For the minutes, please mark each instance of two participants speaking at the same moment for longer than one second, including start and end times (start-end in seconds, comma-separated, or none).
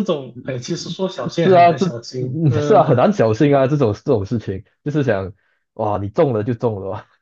1.3-3.1